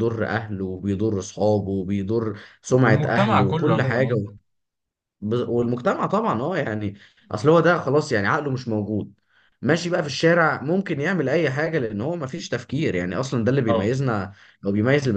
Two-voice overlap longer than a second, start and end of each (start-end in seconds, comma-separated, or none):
2.8-4.1